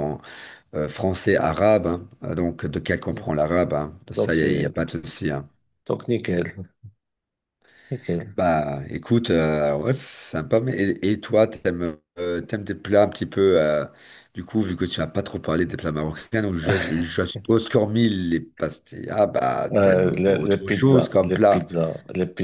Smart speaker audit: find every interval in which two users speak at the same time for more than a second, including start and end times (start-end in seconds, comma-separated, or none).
19.7-21.7